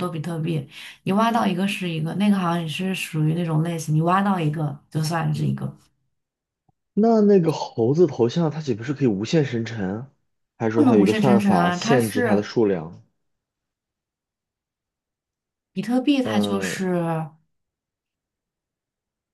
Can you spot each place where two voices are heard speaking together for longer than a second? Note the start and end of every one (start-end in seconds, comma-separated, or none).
10.7-12.5